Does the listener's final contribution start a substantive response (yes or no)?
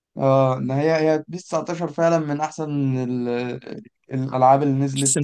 yes